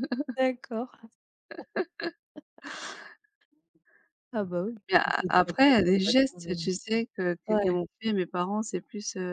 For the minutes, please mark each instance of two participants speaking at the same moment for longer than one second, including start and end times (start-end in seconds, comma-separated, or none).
4.9-6.7